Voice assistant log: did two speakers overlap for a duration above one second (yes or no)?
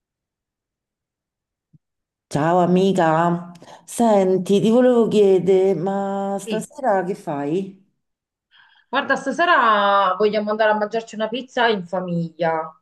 no